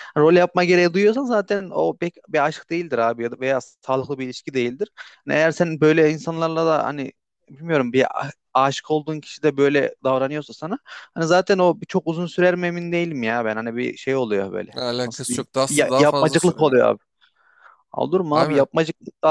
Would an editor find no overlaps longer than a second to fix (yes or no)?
no